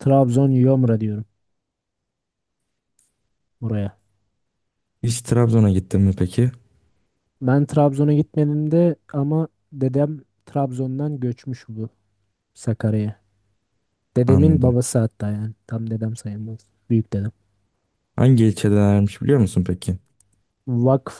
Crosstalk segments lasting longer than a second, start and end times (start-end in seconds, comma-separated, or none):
none